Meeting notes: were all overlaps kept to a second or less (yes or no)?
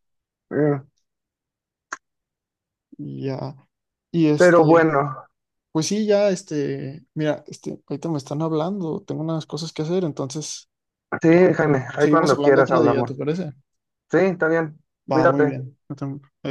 no